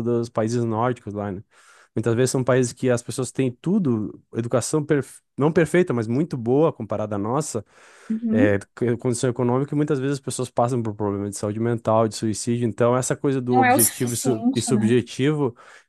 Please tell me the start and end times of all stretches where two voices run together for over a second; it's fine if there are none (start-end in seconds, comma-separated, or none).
13.5-15.0